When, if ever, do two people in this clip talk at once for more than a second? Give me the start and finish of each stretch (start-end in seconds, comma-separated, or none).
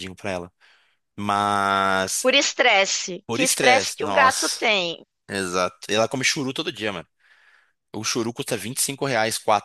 3.3-4.6